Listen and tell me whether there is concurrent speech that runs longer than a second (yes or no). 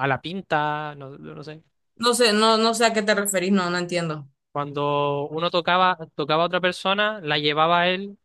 no